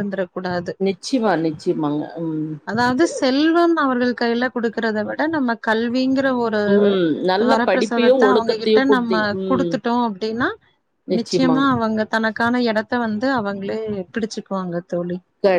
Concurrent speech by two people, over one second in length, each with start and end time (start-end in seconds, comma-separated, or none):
7.5-9.7